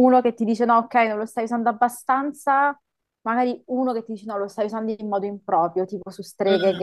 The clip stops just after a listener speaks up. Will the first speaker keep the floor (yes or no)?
yes